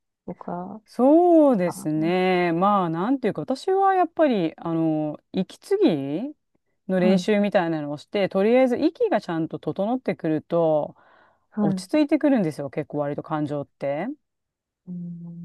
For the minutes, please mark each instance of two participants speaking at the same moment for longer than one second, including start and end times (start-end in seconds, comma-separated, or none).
none